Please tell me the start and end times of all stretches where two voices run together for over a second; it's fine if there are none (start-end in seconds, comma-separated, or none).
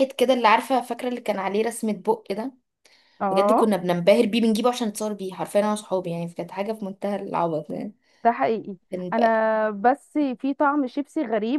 none